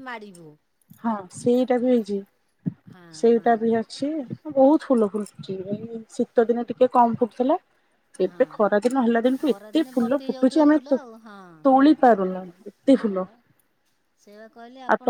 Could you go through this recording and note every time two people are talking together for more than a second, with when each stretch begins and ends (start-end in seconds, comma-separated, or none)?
9.4-11.9